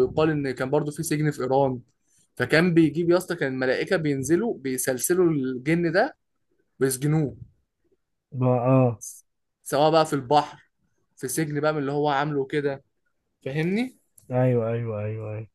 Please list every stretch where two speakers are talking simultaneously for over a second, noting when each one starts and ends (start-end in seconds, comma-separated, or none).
none